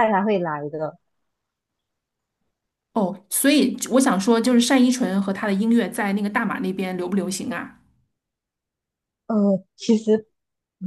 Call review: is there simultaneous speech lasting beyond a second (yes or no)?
no